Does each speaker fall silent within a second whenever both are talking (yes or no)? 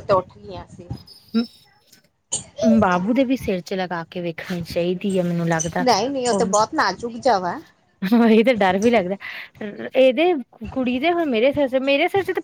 yes